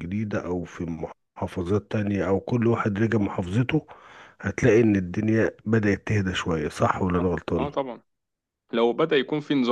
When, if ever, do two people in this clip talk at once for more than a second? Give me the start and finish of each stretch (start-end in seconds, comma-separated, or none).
none